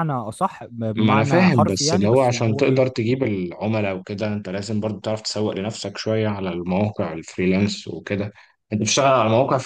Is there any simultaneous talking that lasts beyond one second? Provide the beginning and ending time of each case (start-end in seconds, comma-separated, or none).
1.0-2.8